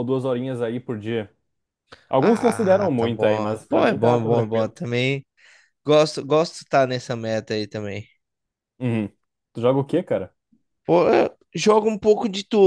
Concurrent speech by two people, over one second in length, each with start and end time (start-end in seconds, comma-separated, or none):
2.2-4.8